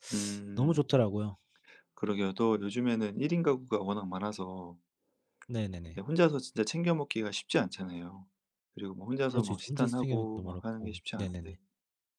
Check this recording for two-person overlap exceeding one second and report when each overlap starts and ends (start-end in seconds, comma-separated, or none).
9.3-11.6